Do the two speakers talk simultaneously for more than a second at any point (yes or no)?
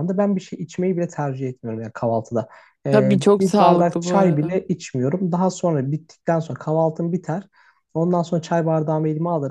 yes